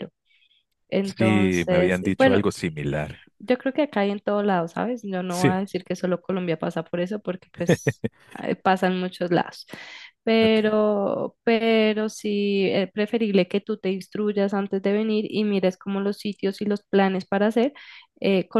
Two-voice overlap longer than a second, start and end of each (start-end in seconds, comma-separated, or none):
1.0-2.4